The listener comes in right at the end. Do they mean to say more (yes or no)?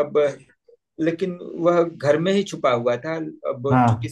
no